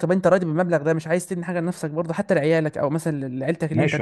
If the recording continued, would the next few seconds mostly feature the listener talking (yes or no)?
yes